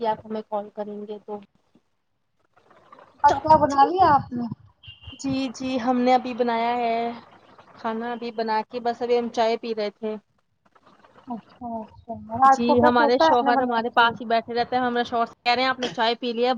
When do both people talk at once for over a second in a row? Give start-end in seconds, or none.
12.5-14.1